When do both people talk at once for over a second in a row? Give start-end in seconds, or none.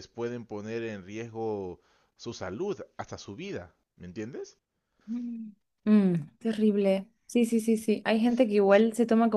none